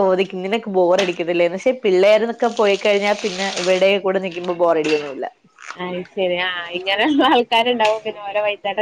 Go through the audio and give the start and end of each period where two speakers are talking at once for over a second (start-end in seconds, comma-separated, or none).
none